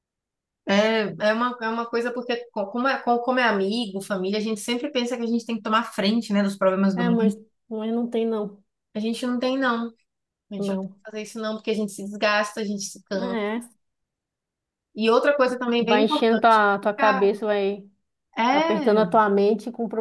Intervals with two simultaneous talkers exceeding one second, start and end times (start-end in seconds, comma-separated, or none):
15.8-17.3